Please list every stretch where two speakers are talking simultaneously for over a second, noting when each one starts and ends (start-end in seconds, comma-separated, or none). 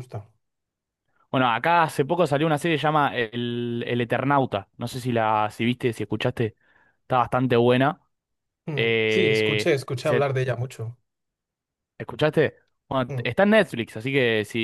8.8-10.3